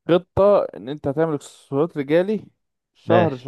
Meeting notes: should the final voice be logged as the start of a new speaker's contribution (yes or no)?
no